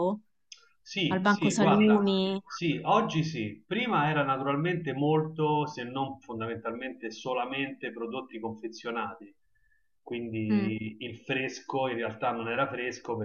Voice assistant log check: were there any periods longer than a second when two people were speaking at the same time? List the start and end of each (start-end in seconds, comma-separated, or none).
1.1-2.4